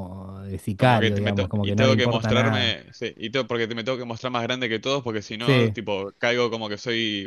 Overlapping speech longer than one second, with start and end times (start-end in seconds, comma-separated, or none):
0.8-2.8